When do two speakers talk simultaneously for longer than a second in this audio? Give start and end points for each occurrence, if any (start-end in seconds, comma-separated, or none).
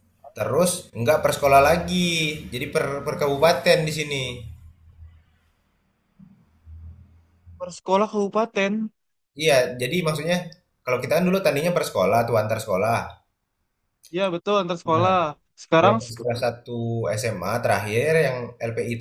none